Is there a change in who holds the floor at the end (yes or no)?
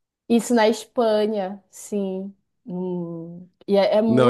yes